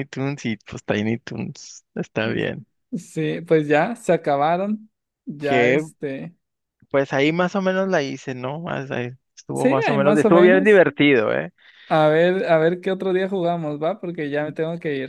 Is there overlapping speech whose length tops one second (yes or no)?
yes